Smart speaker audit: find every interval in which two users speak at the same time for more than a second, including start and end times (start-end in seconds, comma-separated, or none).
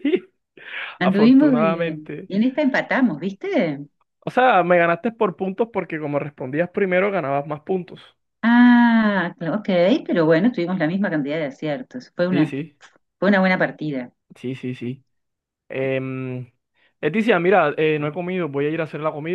1.0-2.3